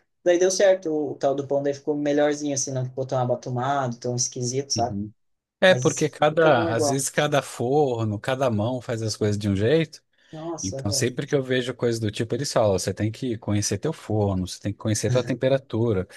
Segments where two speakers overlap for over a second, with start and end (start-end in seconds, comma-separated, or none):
5.7-7.1